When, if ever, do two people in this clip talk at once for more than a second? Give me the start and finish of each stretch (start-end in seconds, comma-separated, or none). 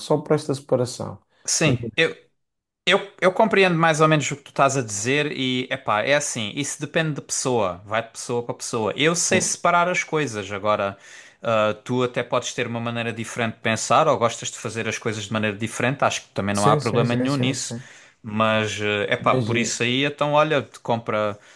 16.5-17.8